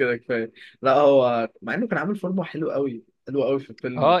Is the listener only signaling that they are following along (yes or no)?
no